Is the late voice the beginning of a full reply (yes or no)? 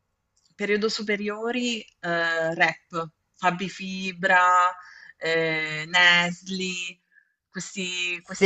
yes